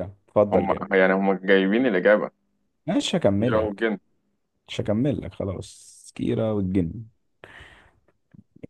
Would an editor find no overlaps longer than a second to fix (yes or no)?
yes